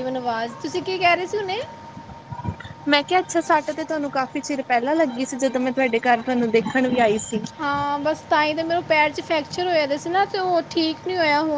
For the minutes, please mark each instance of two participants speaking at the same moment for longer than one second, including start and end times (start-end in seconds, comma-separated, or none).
none